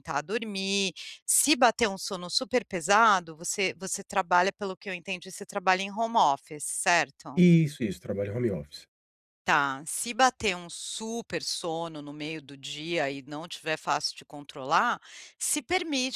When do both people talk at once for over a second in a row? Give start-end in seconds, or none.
none